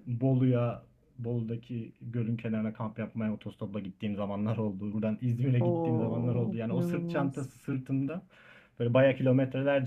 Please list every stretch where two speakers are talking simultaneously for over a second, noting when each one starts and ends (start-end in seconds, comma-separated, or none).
5.6-7.5